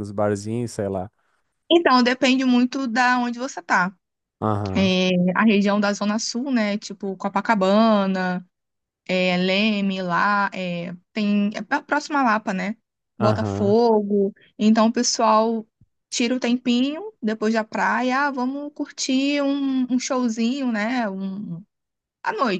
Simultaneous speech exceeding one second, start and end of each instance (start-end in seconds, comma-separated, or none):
none